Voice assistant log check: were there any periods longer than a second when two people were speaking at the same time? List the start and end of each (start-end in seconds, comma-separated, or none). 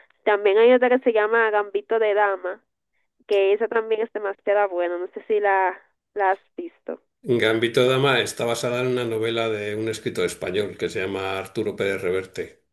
none